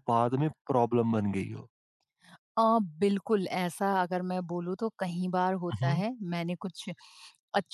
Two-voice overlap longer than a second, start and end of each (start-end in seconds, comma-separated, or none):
none